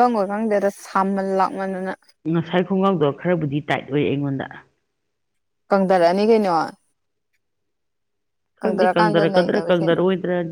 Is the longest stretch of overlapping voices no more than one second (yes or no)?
no